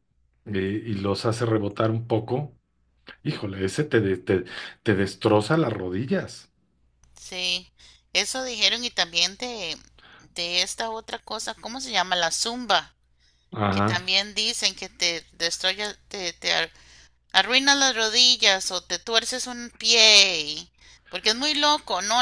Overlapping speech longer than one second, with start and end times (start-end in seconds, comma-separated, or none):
none